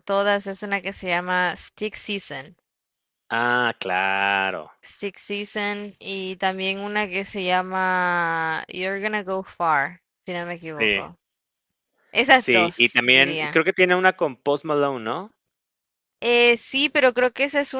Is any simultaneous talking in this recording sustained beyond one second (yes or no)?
yes